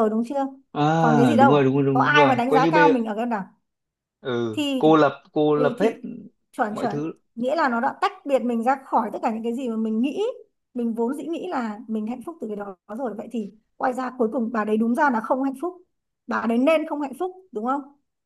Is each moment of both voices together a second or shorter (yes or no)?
no